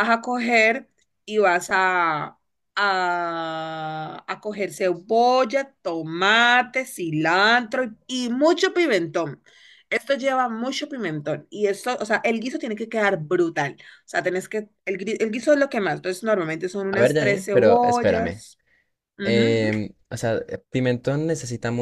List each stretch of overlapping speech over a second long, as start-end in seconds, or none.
16.9-18.4